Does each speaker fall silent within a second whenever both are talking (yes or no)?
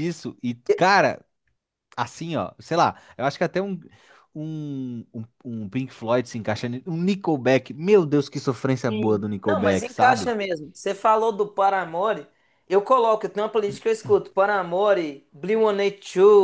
no